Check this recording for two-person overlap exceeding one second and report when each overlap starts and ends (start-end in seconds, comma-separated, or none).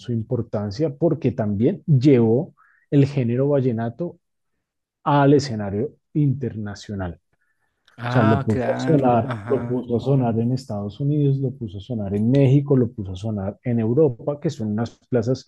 8.0-9.8